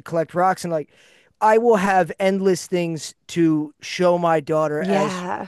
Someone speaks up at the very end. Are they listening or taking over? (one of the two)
listening